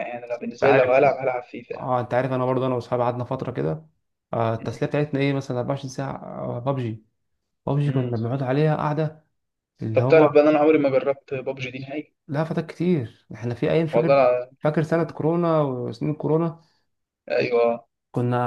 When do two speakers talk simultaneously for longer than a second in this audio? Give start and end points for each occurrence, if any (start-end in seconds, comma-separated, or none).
none